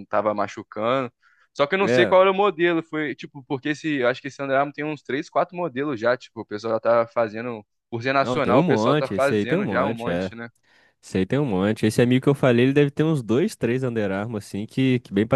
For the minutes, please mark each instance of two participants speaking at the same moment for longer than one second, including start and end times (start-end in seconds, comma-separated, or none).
8.2-10.3